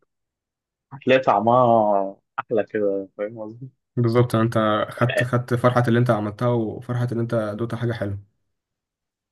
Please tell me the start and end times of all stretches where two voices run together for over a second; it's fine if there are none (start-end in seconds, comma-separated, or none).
none